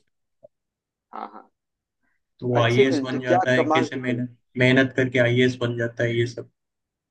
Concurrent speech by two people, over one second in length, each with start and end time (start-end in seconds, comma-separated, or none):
2.6-4.2